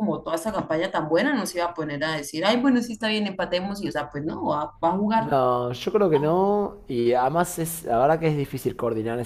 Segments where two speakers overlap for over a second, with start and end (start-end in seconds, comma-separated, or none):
none